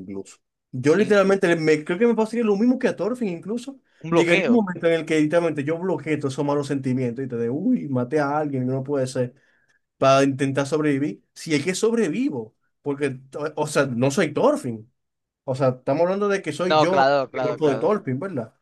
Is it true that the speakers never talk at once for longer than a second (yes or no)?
no